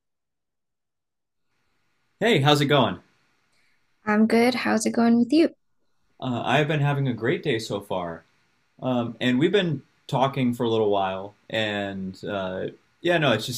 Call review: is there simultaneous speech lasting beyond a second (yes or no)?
no